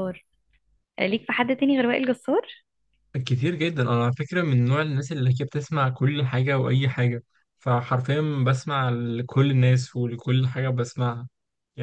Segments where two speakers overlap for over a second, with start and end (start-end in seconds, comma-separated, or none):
none